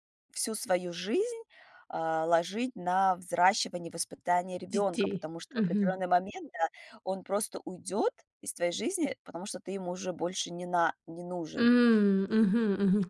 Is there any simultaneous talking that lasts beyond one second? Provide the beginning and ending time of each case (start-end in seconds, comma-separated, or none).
4.7-6.0